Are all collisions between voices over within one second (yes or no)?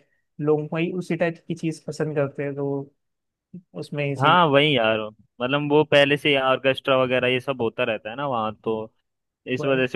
yes